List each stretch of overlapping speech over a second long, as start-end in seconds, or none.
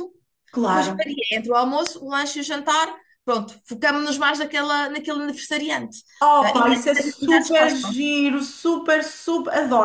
6.4-8.0